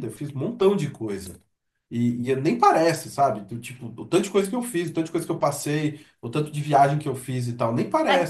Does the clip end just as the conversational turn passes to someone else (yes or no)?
yes